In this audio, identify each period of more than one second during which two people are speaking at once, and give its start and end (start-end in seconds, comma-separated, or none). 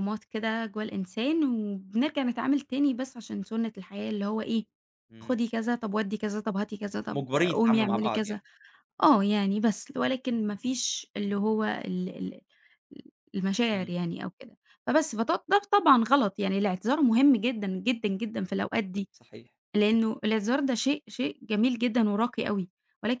7.1-8.4